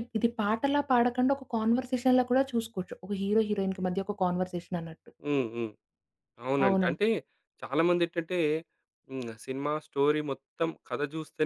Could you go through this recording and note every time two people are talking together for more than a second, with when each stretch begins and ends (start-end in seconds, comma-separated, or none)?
none